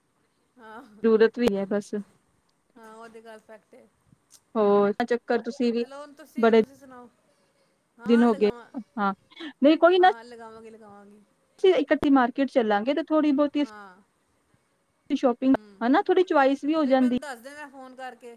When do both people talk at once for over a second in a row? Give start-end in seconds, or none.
none